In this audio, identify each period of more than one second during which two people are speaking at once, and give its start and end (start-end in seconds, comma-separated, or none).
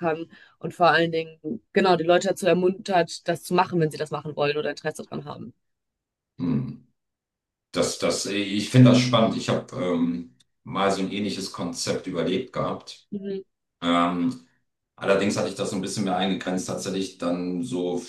none